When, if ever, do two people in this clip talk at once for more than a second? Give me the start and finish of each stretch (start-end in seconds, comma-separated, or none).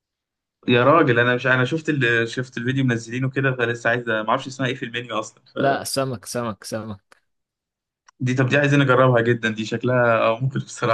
none